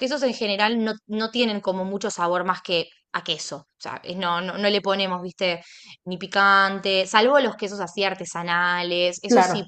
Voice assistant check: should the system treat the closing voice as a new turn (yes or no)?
no